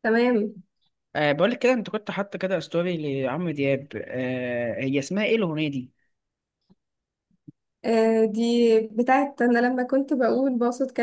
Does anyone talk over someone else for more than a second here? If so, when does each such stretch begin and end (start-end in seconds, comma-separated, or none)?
none